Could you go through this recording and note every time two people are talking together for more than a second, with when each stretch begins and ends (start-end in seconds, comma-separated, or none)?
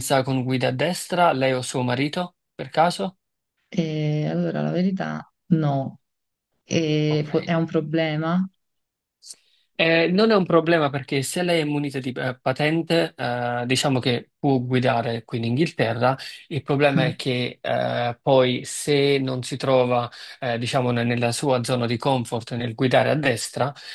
none